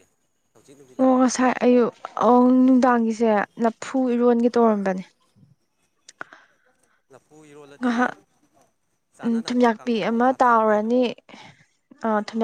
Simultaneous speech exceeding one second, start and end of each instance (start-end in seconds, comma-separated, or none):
9.2-10.9